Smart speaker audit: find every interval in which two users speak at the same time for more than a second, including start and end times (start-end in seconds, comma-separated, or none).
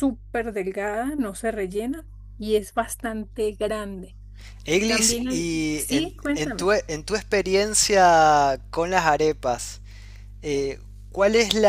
4.8-6.7